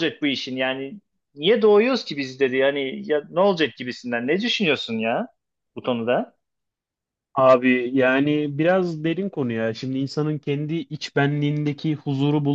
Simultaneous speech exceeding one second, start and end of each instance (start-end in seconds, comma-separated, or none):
none